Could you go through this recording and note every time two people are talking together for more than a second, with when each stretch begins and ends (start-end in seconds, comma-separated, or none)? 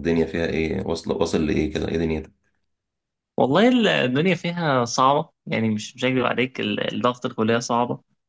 none